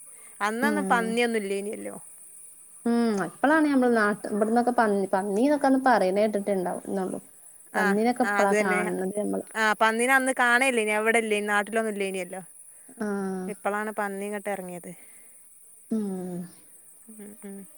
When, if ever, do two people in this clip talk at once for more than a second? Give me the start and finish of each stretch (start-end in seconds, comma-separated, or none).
none